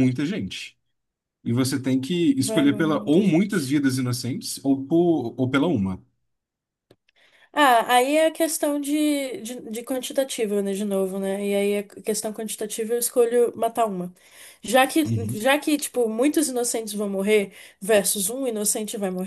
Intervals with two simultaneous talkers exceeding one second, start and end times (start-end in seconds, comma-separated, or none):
2.5-3.8